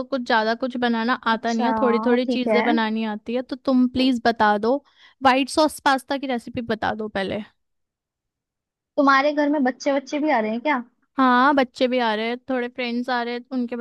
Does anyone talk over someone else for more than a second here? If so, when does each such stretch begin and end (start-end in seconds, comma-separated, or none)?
1.3-2.6